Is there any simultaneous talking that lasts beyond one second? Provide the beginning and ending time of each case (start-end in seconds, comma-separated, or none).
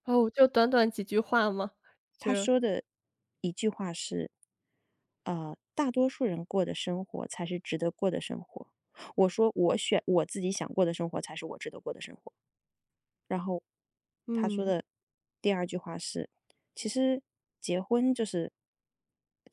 none